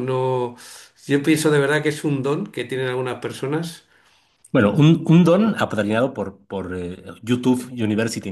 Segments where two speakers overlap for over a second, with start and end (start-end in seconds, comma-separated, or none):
none